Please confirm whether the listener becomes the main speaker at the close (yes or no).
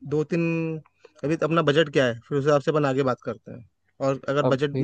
no